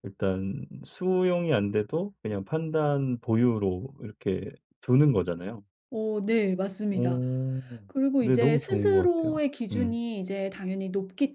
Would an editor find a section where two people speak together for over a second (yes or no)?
yes